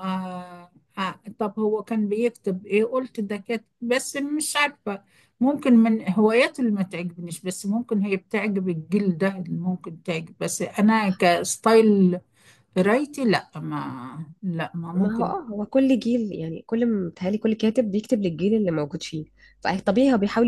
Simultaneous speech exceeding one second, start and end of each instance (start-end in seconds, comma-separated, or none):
none